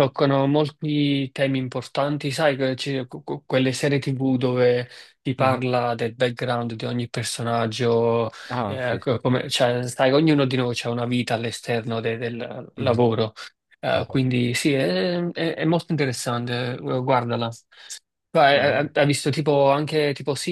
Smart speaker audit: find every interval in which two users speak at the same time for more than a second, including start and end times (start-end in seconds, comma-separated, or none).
none